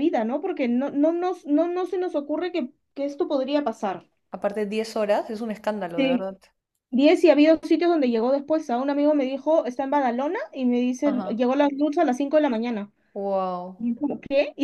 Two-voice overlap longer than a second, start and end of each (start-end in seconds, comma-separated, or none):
none